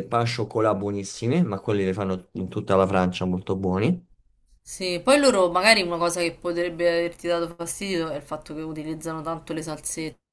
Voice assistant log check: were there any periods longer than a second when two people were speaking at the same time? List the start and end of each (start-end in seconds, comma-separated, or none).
none